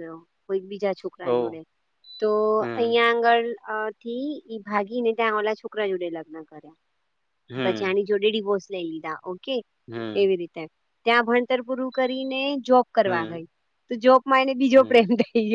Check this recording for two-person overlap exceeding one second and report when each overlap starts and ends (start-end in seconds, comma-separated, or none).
none